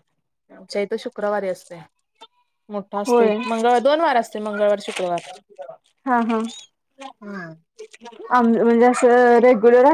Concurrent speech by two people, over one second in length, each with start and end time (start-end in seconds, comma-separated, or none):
none